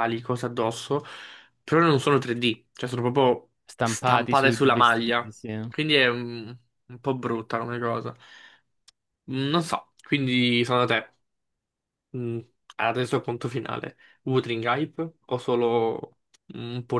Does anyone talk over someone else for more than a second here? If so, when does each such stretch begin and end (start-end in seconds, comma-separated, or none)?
3.7-5.7